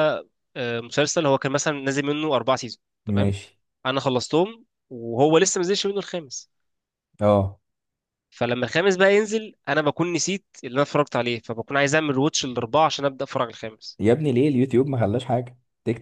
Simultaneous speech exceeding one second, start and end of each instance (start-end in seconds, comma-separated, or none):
none